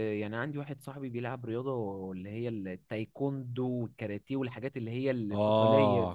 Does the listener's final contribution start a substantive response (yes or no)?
yes